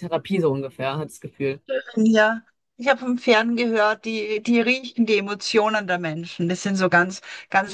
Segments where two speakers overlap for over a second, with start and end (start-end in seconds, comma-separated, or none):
none